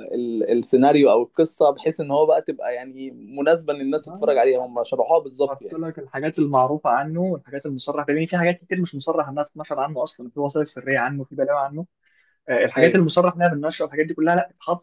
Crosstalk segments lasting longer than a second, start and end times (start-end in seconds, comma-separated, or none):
none